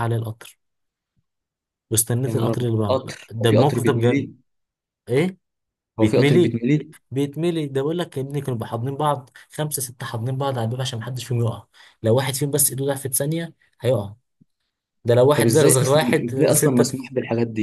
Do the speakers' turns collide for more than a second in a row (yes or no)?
yes